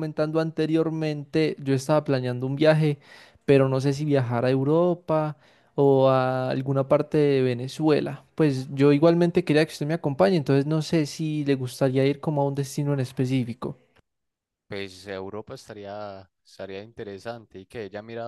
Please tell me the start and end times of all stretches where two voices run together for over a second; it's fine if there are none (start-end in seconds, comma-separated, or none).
none